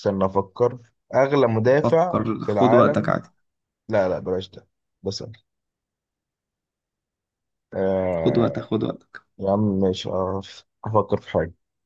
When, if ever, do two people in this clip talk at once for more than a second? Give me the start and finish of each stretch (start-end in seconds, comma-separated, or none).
1.8-3.2